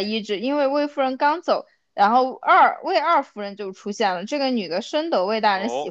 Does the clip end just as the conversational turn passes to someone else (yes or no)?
yes